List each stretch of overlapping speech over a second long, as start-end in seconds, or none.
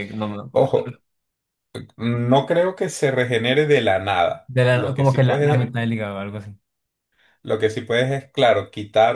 4.5-5.7